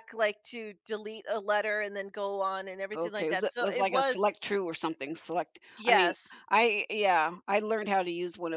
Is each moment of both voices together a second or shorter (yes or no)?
no